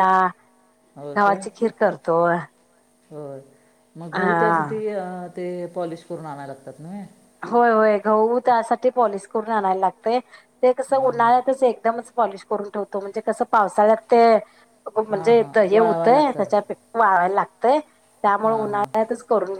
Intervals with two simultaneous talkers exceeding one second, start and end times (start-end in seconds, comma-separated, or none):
15.1-16.8